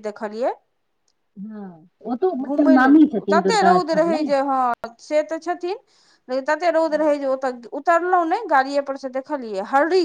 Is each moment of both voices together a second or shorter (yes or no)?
no